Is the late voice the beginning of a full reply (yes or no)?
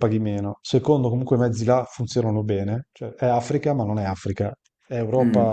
yes